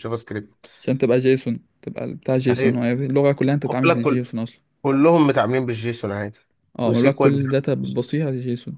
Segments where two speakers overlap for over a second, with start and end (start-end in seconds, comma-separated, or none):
6.8-8.2